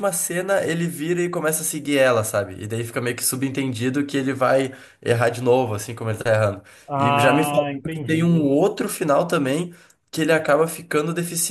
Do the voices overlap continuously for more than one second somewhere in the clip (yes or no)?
yes